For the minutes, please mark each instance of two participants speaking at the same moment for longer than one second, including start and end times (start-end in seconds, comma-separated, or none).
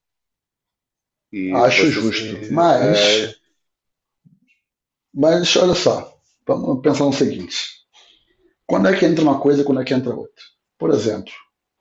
1.6-3.4